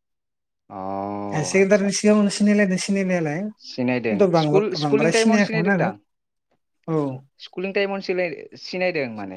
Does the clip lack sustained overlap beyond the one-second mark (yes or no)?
no